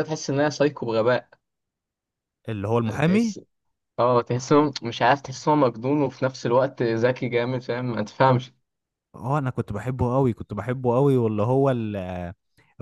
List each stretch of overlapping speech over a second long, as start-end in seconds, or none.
none